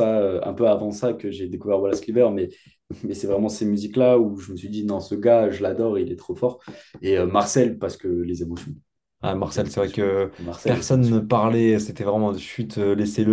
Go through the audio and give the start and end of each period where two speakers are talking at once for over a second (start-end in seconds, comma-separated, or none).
9.5-11.2